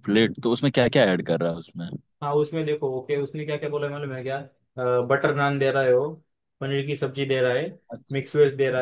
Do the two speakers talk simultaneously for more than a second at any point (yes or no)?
no